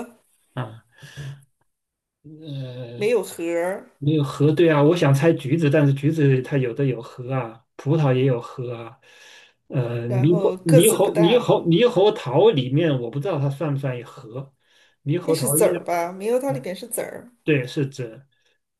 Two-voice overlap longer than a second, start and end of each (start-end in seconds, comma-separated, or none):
10.1-11.5